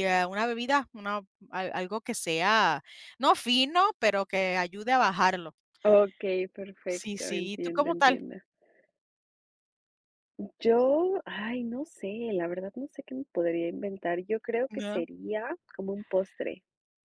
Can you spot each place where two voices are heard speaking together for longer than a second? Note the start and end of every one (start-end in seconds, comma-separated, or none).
6.9-8.2